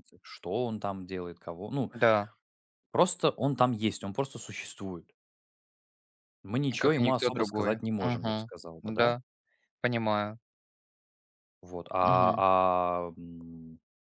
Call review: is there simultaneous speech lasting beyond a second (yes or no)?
yes